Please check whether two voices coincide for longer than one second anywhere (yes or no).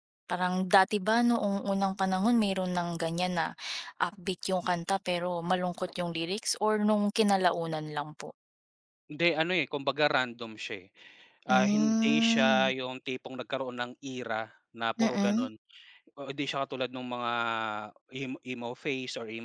yes